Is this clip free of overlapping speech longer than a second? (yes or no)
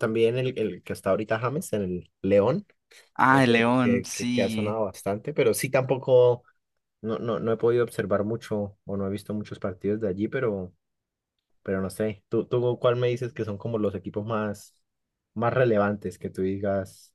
no